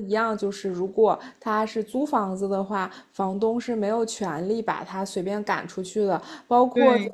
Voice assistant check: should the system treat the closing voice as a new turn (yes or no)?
no